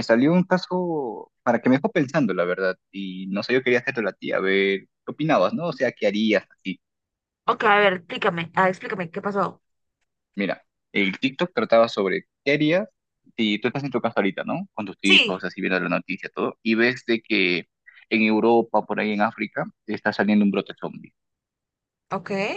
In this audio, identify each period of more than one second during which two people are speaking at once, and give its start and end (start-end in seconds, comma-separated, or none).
none